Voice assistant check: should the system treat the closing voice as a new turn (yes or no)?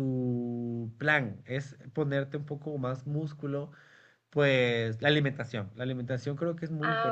no